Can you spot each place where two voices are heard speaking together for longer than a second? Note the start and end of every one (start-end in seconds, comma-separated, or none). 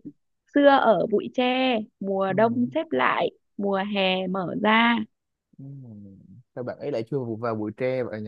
none